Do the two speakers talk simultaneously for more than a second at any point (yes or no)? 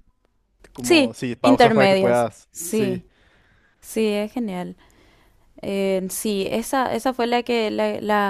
yes